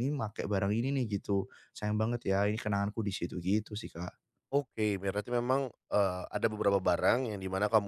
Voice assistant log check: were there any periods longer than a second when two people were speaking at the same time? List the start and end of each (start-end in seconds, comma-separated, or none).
none